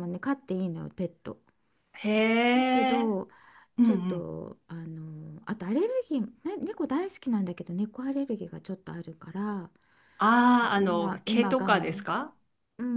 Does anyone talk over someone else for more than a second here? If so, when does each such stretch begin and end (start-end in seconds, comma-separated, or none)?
10.5-12.0